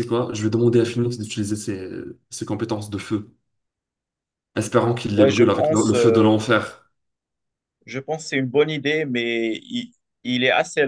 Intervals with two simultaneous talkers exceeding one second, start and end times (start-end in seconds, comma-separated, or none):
5.2-6.3